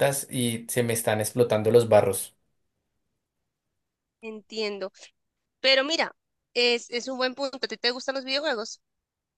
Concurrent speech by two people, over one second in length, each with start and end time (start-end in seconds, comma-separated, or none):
none